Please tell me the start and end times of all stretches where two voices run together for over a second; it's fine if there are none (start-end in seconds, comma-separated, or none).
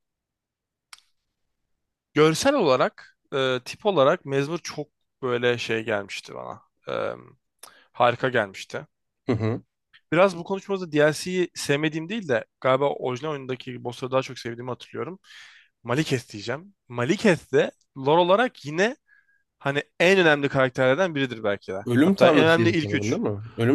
21.9-23.2